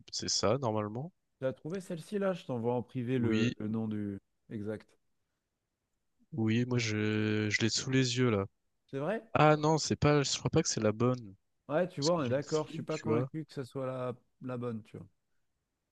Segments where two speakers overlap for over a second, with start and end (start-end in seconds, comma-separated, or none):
12.0-13.3